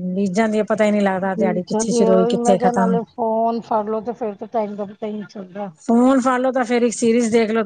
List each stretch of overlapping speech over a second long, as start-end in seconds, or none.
1.2-3.0